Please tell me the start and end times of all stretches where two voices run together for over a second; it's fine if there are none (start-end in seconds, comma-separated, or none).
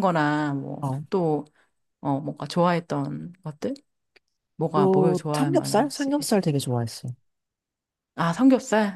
4.7-6.1